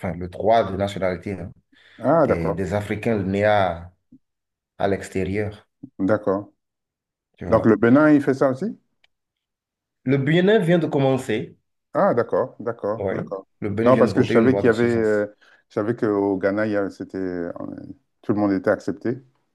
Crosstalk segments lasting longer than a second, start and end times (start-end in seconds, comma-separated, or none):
13.9-15.3